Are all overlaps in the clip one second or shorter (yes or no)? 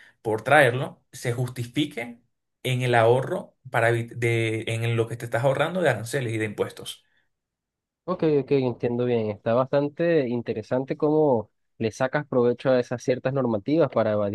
yes